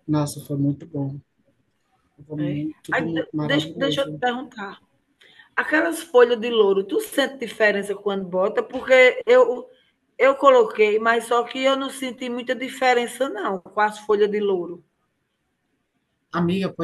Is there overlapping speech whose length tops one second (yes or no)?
yes